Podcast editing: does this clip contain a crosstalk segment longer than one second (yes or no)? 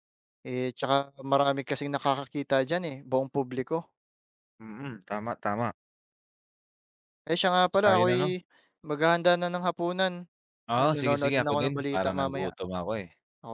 yes